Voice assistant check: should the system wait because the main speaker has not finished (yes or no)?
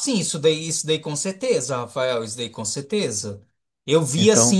yes